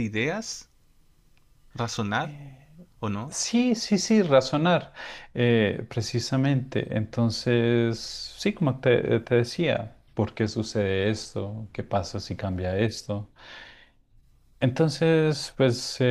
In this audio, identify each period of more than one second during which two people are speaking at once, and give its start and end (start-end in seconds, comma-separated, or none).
none